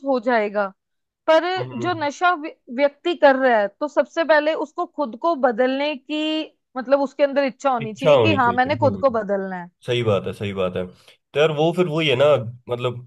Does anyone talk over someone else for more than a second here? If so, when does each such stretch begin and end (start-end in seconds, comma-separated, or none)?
7.8-9.2